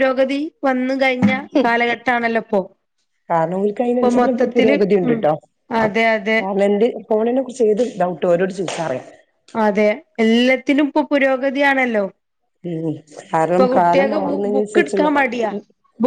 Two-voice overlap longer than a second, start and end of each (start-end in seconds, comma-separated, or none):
13.5-15.1